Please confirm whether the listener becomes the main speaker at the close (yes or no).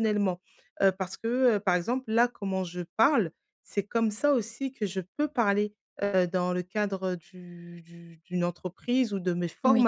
no